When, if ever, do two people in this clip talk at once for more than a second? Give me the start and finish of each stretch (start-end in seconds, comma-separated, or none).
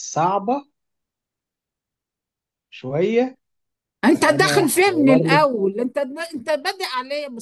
4.2-5.4